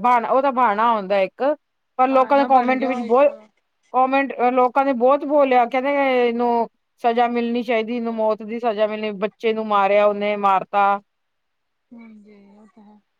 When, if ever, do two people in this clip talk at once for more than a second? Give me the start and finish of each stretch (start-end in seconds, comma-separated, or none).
2.1-3.3